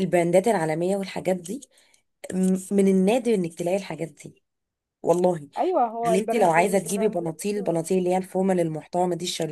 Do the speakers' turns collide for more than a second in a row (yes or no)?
yes